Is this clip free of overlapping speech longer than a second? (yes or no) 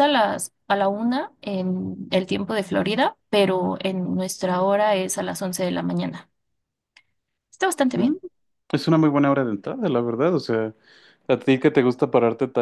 yes